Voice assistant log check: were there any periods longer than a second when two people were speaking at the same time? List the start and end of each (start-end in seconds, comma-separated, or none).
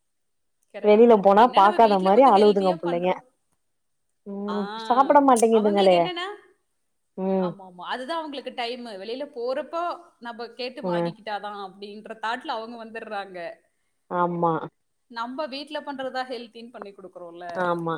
0.9-3.1